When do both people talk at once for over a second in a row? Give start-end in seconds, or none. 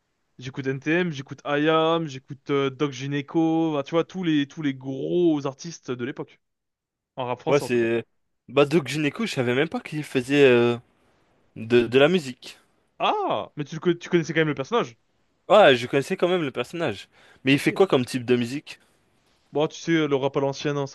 none